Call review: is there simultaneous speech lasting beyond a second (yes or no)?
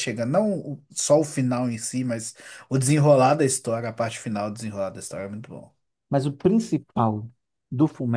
no